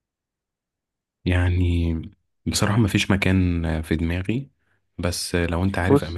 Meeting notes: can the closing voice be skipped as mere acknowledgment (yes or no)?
yes